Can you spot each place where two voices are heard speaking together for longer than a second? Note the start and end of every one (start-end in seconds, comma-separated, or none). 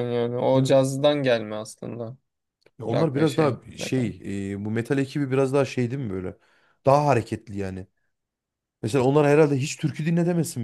2.9-4.1